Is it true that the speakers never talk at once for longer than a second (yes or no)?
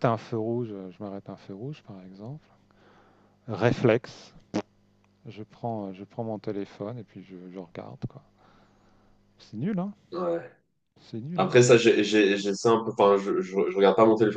yes